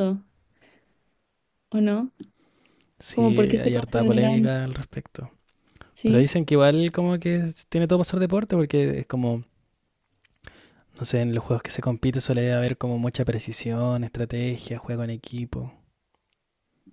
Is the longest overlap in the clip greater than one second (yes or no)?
yes